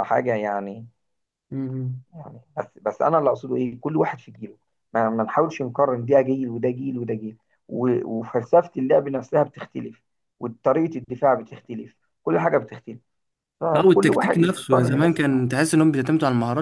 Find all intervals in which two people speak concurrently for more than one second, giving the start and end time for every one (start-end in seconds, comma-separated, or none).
13.7-15.5